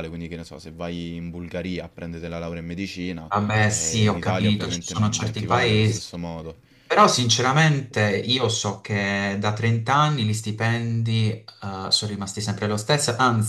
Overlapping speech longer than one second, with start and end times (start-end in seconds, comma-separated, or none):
3.3-6.1